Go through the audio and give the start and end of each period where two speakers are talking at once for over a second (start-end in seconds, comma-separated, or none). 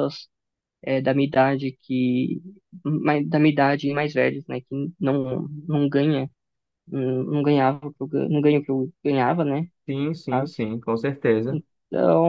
none